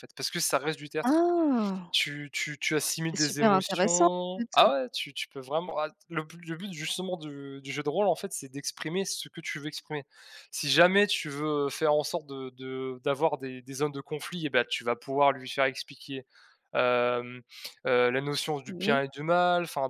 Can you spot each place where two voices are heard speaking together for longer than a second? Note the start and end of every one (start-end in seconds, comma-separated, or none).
3.1-4.7